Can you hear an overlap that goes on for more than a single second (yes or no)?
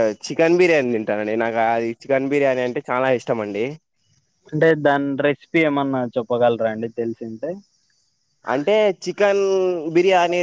no